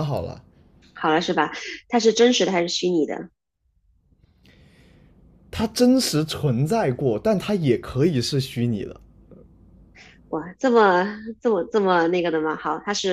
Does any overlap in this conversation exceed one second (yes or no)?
no